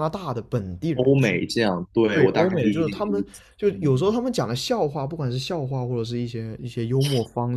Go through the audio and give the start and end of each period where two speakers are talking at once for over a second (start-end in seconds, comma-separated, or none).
2.1-3.9